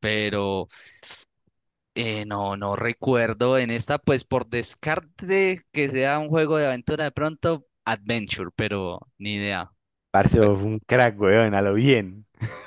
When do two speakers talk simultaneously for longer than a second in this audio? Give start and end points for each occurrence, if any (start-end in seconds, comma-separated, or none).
none